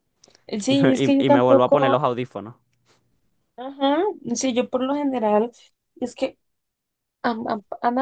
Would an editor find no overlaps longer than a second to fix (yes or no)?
no